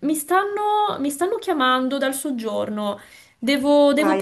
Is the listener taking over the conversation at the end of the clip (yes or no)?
yes